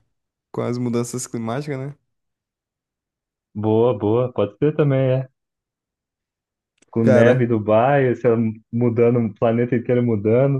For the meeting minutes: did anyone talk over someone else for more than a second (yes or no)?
no